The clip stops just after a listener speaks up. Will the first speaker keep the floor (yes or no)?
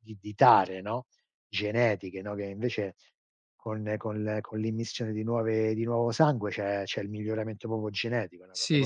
no